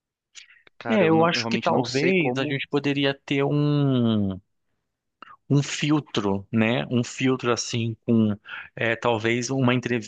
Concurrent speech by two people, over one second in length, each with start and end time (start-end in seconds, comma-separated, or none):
0.9-2.6